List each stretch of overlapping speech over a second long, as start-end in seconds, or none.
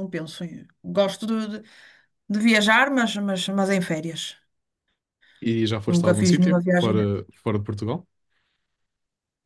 5.8-7.0